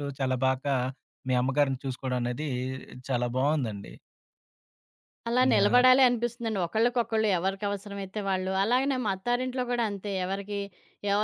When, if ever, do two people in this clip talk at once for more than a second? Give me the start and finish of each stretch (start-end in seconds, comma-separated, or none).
none